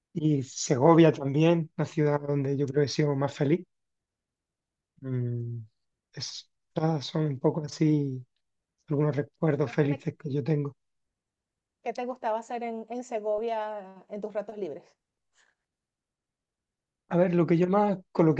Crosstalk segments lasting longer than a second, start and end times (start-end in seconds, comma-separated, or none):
none